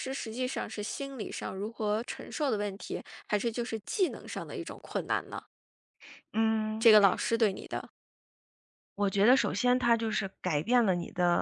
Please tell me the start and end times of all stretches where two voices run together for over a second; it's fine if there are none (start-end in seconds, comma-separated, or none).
none